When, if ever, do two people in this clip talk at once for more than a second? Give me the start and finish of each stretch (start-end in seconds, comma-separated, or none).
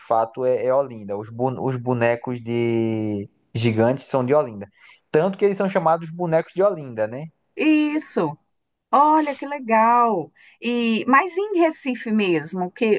none